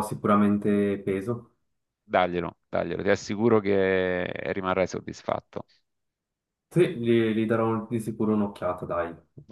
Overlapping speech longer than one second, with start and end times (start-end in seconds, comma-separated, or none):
none